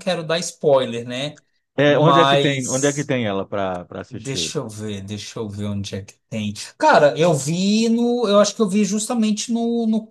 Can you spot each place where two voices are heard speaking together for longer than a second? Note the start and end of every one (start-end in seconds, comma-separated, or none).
1.9-3.1